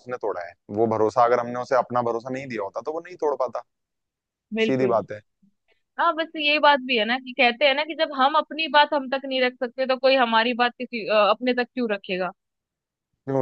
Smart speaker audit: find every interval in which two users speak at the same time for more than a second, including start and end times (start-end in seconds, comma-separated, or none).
none